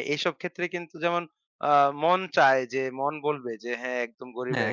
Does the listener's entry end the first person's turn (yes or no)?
no